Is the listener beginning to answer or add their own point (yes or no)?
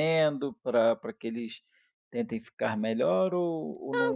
yes